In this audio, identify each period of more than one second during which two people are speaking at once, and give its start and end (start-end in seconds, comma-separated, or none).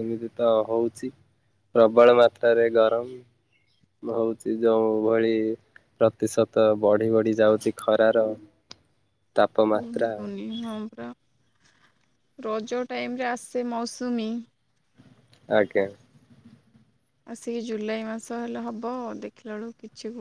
none